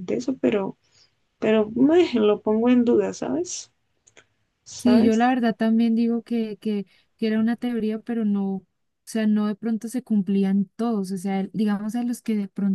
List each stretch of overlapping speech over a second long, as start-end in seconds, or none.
none